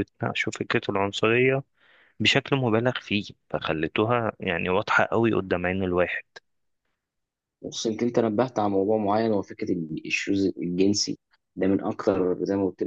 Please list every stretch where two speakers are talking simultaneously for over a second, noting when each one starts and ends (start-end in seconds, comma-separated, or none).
none